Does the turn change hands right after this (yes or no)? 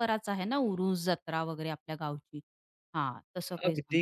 yes